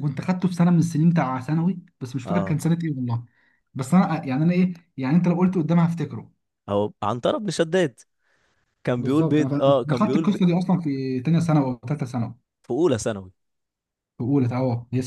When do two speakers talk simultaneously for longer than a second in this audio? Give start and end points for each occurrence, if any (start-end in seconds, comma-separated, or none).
9.0-10.4